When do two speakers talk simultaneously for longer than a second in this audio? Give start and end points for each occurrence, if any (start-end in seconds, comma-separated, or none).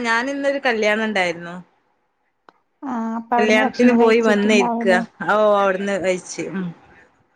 3.3-5.0